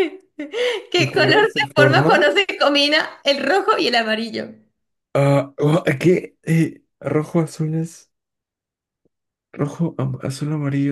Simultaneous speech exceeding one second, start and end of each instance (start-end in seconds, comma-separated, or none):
0.9-2.2